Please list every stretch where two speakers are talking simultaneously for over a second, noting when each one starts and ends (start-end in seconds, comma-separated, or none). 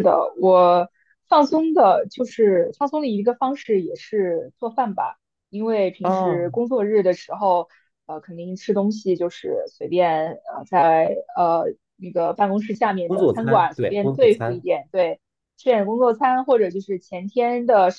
13.1-14.7